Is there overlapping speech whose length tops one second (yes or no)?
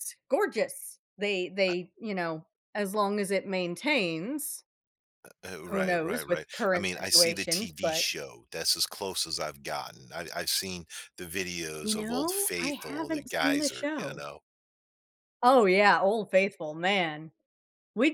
yes